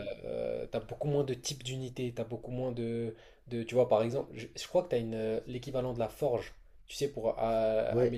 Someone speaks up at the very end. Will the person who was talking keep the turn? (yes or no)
yes